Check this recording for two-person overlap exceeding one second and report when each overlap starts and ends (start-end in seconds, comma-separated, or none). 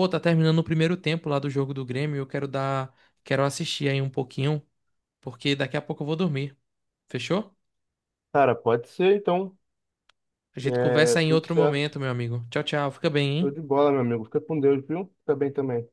10.6-12.0